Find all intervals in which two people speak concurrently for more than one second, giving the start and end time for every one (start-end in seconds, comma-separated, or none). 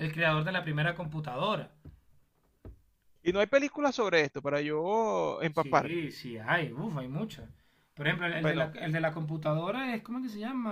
none